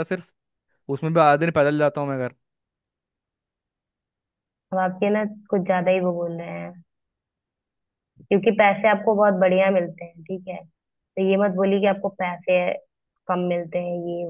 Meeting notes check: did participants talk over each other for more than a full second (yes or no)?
no